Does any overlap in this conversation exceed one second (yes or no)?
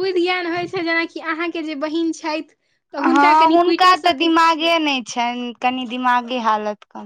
yes